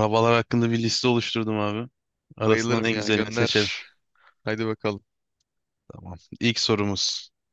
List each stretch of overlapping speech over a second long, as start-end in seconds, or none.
2.4-3.7